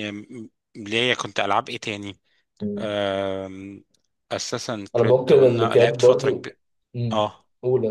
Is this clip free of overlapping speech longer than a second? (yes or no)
no